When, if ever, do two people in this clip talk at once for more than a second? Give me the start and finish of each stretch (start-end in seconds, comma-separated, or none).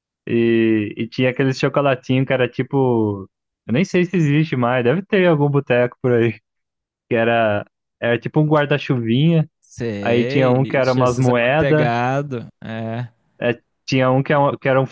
10.0-11.9